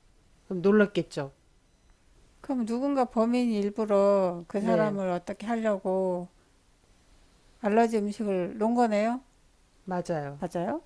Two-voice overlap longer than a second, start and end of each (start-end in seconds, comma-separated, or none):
none